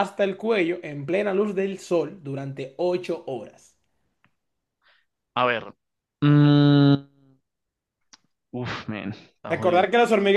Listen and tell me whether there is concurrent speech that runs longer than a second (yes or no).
no